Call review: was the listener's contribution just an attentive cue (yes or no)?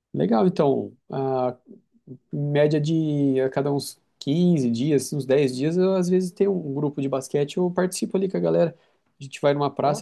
yes